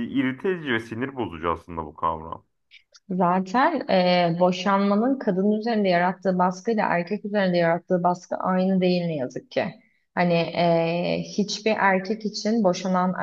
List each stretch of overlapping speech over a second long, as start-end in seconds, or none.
none